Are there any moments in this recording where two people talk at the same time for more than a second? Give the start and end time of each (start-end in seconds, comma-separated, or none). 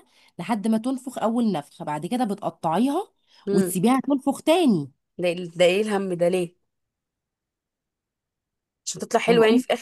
none